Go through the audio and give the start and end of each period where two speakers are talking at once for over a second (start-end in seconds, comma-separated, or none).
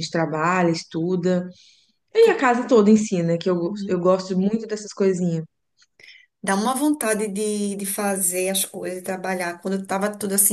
none